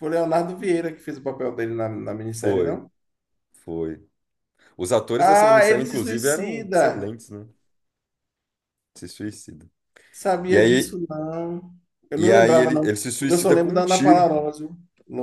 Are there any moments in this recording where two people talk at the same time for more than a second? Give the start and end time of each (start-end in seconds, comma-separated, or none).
5.2-7.2, 12.2-14.3